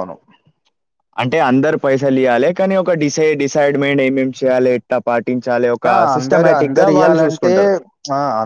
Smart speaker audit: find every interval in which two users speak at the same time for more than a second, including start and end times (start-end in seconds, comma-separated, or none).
5.9-7.5